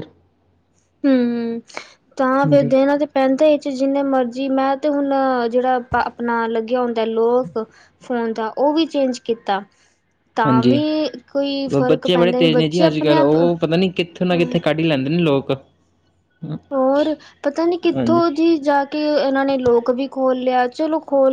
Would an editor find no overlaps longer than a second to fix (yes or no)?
no